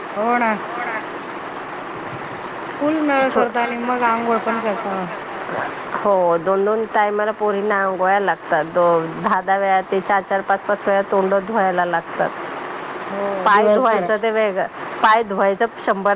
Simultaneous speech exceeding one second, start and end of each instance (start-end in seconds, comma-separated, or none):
none